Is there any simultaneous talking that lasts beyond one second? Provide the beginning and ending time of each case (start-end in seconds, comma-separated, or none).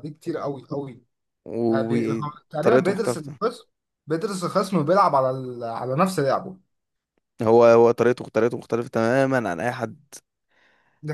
1.7-3.4